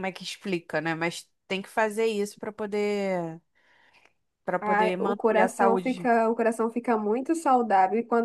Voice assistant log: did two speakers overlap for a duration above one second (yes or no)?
yes